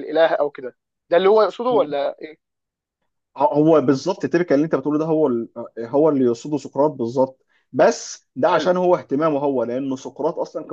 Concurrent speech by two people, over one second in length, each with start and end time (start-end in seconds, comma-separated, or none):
none